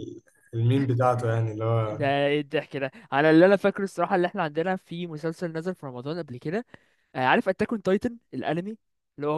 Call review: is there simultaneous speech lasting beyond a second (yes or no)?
no